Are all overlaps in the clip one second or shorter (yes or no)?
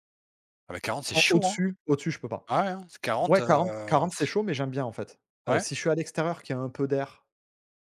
yes